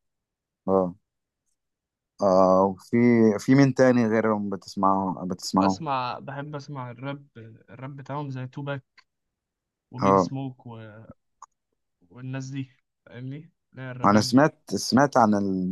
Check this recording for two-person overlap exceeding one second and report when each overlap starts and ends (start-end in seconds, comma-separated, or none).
none